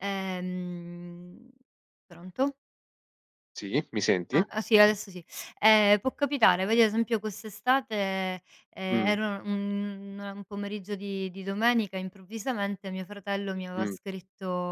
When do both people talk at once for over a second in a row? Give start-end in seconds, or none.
none